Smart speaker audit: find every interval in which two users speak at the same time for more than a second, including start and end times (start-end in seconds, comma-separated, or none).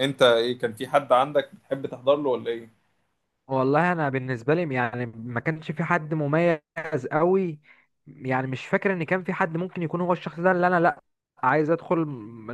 none